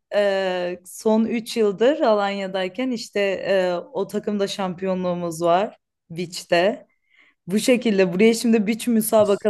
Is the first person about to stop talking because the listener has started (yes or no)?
no